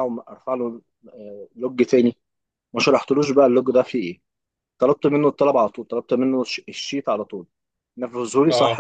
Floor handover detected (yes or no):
yes